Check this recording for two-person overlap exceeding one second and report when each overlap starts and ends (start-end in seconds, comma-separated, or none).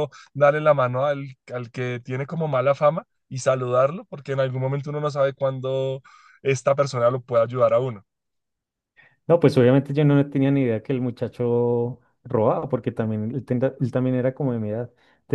none